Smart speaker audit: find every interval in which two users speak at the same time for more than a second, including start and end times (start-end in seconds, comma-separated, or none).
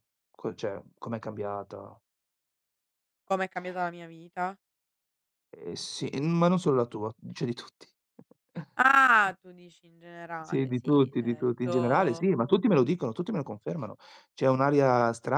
10.4-12.3